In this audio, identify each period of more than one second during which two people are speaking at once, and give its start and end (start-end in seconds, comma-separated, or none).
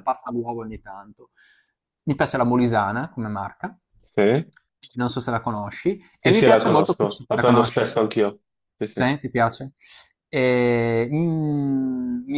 6.2-7.9